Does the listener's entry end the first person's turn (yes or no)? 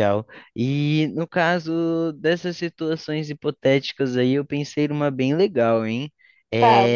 no